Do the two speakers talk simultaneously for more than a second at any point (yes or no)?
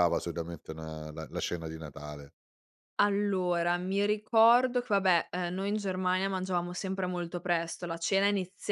no